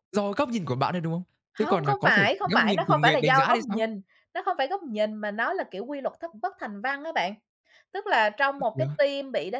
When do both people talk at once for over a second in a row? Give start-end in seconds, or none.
1.6-3.9